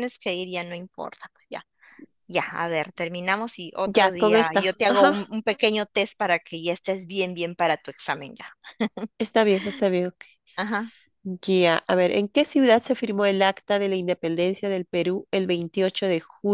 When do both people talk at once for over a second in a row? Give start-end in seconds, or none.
3.9-5.3